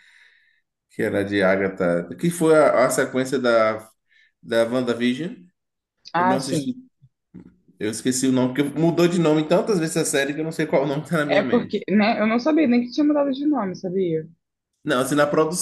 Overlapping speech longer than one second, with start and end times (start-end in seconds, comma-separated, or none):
none